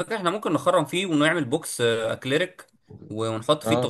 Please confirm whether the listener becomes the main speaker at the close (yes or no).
no